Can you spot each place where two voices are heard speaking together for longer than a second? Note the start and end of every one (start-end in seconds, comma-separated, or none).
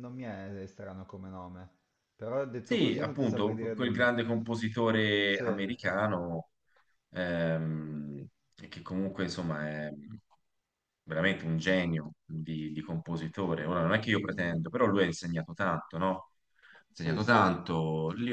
2.6-4.1